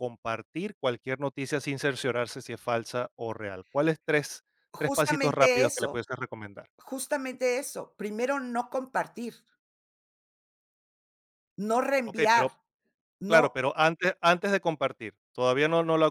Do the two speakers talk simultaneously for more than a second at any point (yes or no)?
yes